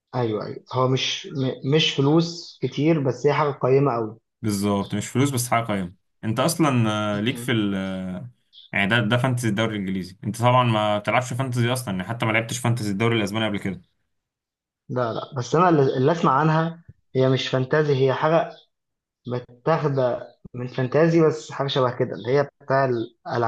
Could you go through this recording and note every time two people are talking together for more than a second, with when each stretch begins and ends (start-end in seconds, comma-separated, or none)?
none